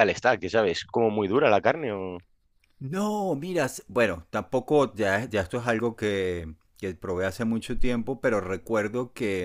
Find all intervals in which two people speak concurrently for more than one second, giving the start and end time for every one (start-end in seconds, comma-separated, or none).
none